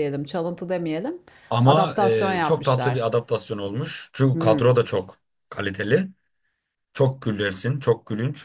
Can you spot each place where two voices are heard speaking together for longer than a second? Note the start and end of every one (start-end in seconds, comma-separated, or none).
1.6-3.0